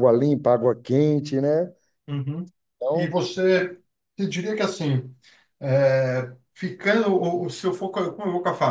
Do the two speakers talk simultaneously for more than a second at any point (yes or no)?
no